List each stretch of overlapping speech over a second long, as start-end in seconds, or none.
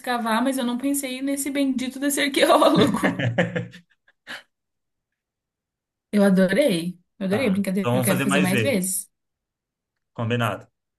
7.3-8.8